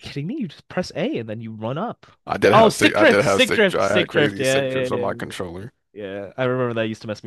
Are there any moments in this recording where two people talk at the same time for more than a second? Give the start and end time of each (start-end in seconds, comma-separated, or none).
2.5-5.1